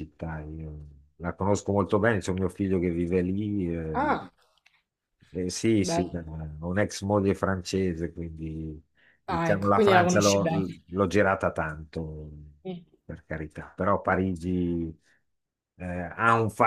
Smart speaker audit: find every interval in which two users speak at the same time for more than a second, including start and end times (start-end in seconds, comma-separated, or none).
9.3-10.5